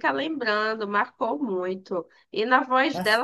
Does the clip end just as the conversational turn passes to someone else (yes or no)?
no